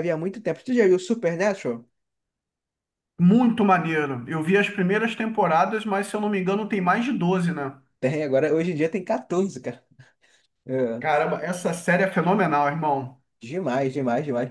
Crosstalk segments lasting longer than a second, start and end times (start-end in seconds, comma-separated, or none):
none